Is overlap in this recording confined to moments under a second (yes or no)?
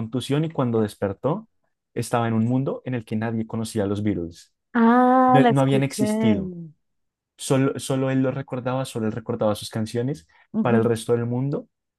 no